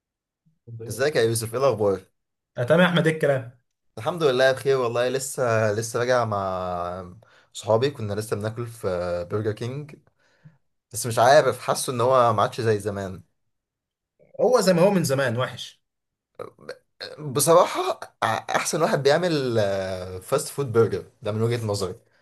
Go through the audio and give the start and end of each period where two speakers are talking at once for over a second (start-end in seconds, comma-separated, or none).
none